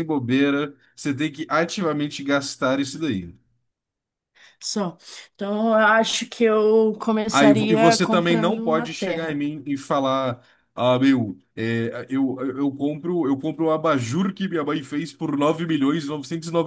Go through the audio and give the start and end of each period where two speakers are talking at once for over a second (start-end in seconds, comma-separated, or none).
7.3-9.4